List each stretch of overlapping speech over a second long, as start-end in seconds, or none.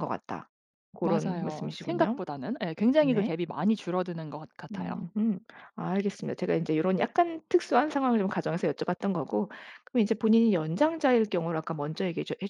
1.0-2.2